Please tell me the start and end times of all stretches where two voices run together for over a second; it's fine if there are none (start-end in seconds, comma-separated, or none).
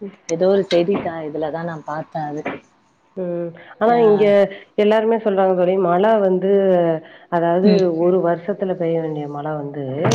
none